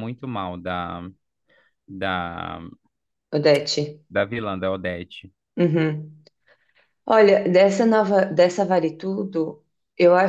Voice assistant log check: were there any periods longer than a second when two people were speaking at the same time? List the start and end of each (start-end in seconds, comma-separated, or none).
none